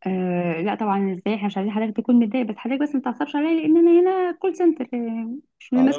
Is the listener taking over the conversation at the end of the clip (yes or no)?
yes